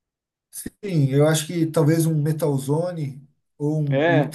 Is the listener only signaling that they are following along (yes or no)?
yes